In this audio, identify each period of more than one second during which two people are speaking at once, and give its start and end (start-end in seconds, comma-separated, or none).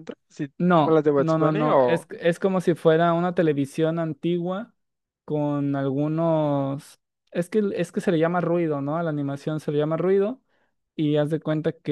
0.6-2.1